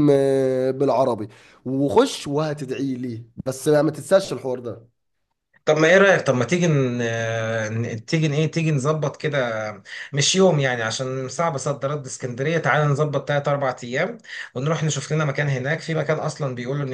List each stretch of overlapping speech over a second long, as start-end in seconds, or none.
none